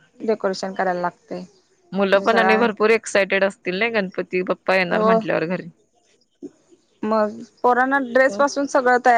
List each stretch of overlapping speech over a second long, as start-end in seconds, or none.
none